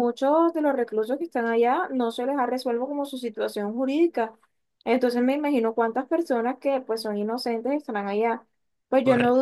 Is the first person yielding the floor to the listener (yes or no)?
no